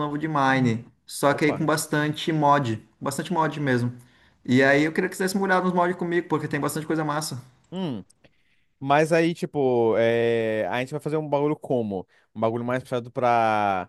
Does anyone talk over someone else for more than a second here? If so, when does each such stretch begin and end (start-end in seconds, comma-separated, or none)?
none